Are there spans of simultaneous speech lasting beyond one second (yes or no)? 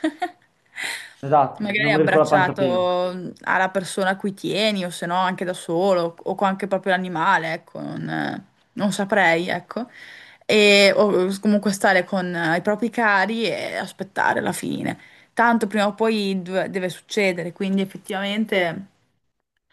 yes